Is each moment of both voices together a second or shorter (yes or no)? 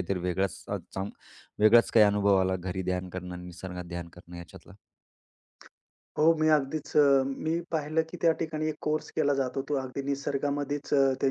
yes